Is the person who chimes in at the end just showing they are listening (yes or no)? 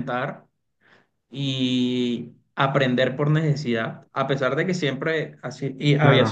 yes